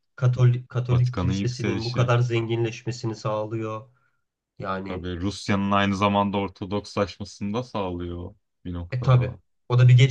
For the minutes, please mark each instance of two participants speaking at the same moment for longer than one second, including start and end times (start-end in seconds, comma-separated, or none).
0.9-2.1